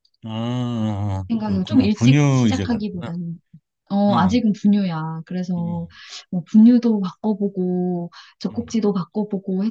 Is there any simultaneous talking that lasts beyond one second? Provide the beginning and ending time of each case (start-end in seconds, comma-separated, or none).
1.3-3.1